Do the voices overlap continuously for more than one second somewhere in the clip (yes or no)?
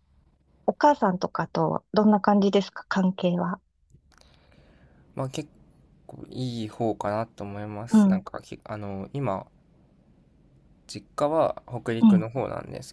no